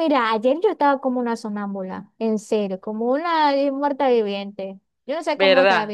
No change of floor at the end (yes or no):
yes